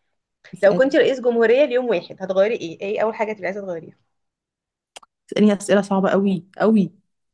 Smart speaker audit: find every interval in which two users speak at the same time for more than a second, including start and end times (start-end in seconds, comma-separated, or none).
none